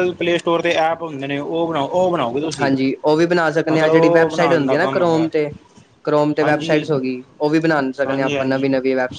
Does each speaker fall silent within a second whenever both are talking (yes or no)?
no